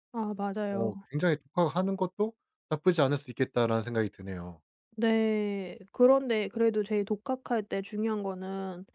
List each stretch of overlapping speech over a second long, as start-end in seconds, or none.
none